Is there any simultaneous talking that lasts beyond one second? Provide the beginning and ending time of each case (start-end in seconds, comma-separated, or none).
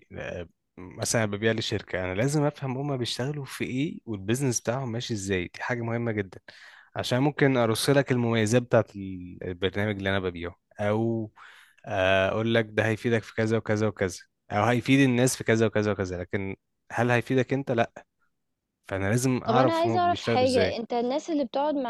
19.5-20.8